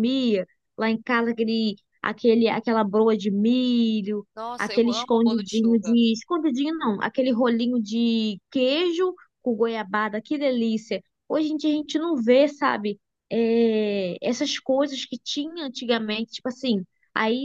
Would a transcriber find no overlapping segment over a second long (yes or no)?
no